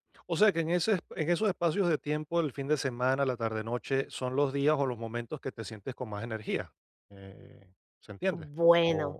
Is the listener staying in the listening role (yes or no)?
no